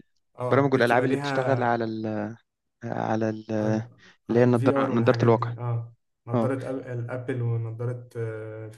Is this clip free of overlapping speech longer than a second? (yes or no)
no